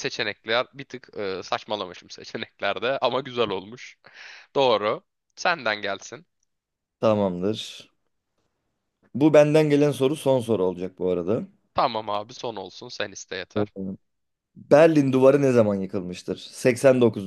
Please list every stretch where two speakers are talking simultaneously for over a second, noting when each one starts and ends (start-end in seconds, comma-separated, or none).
none